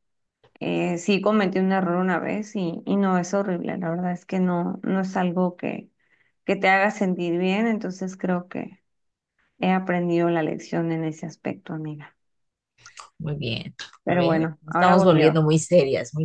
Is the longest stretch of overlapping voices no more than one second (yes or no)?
no